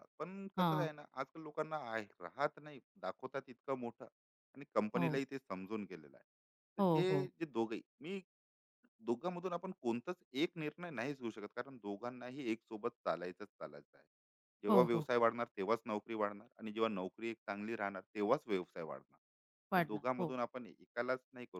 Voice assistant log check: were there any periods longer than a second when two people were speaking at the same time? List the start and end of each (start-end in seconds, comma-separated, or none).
none